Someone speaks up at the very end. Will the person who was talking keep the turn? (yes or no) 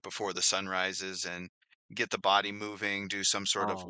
yes